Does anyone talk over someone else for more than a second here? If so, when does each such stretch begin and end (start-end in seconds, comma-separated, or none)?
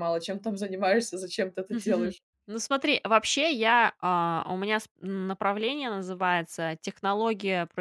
none